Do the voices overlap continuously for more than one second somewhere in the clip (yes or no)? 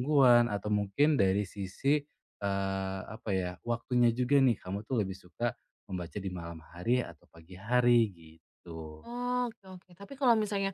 no